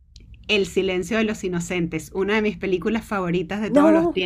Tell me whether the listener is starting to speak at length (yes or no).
yes